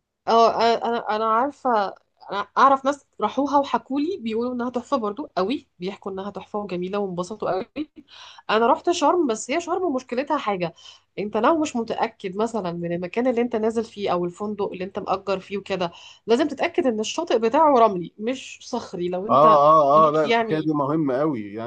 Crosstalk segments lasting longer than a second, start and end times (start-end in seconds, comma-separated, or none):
19.3-20.7